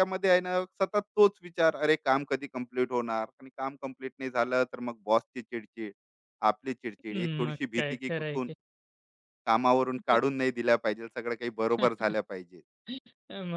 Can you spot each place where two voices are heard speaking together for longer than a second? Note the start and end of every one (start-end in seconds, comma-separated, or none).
7.1-8.5